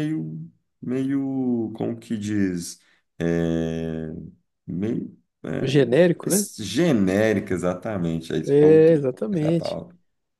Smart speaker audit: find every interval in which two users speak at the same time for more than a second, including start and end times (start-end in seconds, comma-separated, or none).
8.5-9.8